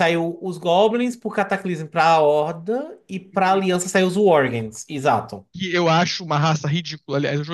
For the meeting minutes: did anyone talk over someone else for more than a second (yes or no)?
no